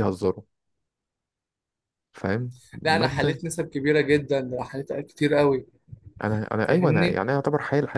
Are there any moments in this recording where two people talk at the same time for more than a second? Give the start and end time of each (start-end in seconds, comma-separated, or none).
none